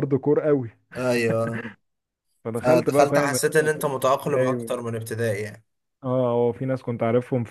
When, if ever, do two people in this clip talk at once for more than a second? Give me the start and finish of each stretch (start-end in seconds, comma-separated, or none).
2.6-4.8